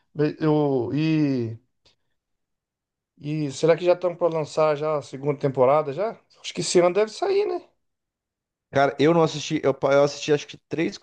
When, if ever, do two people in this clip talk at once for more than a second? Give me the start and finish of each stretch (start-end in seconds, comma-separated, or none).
none